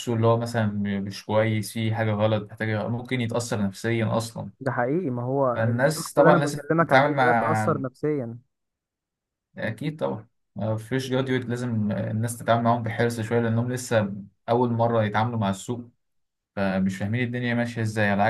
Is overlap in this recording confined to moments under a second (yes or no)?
no